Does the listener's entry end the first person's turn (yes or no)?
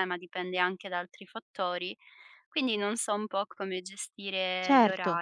yes